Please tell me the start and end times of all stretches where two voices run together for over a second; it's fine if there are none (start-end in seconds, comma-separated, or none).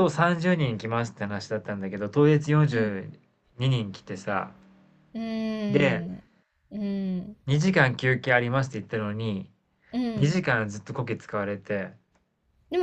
none